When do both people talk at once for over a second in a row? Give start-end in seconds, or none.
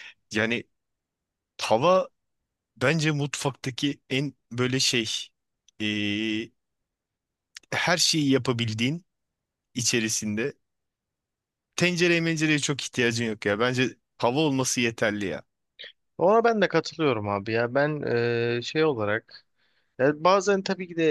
none